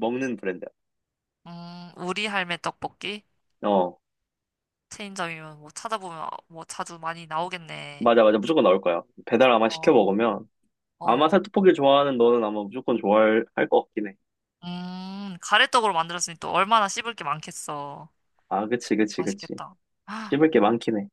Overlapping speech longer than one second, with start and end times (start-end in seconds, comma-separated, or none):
none